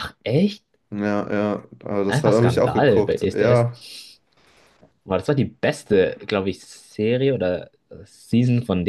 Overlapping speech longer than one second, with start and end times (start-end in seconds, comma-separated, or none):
2.1-3.8